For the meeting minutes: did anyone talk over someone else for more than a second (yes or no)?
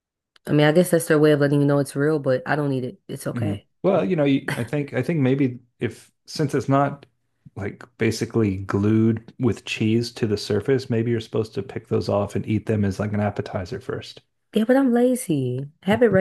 no